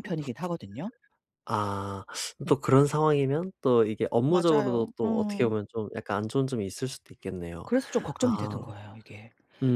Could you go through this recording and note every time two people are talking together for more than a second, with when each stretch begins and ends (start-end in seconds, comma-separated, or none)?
4.3-5.5